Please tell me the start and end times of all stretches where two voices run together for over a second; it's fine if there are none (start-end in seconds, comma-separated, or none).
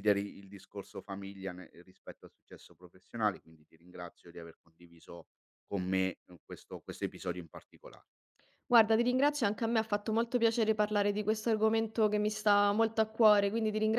none